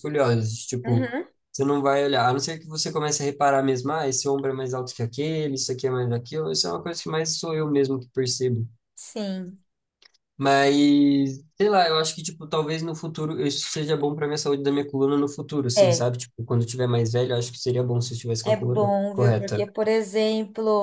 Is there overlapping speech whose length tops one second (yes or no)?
yes